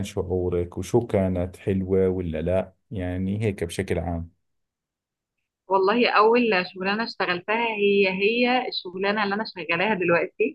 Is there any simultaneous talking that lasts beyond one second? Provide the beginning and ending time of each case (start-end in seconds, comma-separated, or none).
none